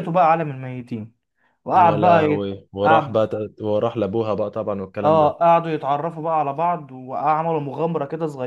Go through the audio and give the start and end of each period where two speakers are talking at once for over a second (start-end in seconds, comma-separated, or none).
1.7-3.2